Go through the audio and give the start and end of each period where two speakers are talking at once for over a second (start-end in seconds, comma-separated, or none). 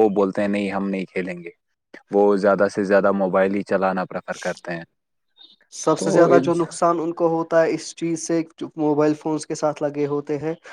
none